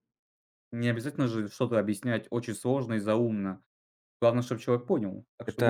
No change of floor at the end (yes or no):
no